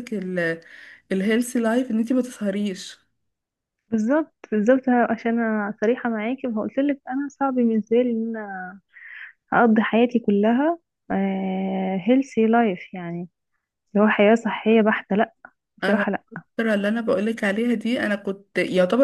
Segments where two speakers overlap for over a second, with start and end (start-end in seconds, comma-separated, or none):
none